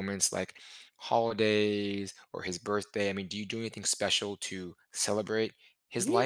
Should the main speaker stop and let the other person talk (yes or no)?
yes